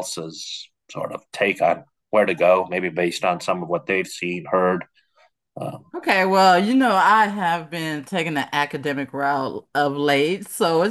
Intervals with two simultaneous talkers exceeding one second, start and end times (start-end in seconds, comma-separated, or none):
none